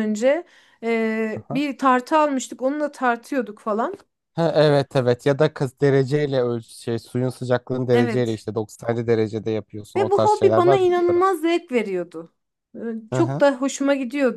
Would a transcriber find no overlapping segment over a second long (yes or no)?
no